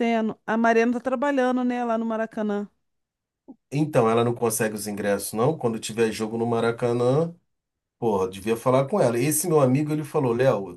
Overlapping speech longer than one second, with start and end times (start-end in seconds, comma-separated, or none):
none